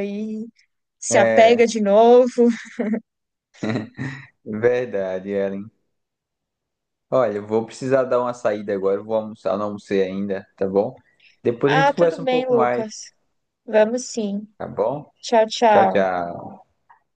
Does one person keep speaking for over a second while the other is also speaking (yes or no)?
yes